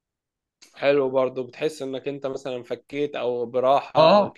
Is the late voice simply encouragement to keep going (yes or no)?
no